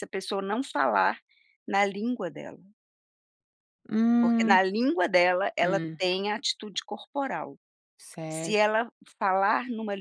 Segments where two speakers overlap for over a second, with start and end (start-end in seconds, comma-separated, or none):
none